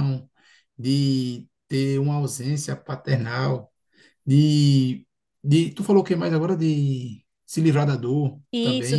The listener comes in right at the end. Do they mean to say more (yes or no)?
yes